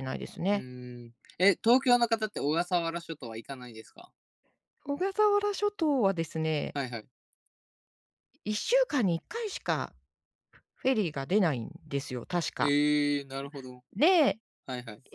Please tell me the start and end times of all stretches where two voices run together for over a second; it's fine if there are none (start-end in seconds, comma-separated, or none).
none